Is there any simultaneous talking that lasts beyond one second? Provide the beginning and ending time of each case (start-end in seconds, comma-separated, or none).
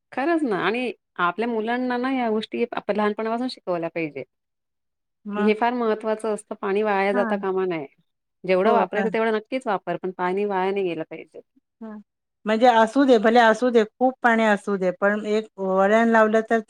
none